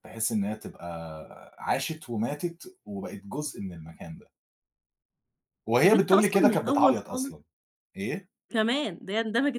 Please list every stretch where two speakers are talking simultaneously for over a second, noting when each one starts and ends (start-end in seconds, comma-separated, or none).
5.8-7.3